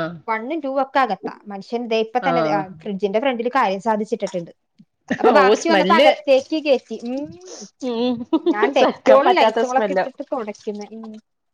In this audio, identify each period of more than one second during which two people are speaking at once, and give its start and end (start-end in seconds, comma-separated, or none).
8.8-10.1